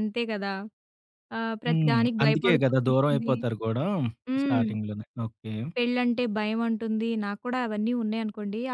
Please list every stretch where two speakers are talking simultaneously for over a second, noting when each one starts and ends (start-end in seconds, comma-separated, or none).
1.7-3.3